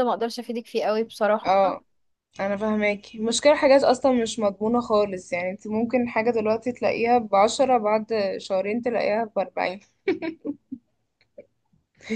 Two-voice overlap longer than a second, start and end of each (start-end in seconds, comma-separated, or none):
none